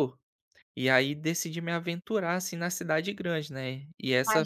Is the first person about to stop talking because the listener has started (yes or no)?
yes